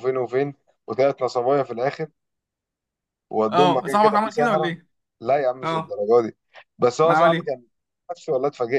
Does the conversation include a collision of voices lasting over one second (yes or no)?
yes